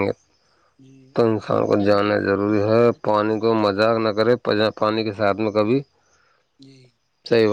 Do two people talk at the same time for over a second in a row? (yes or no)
yes